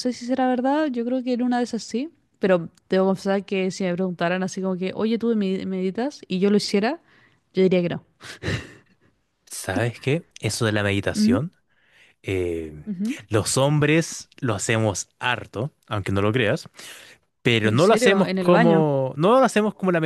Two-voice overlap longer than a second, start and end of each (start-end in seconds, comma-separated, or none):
17.6-18.9